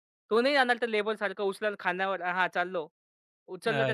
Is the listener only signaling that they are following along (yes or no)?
yes